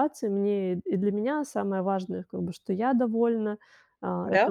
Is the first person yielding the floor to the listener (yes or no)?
no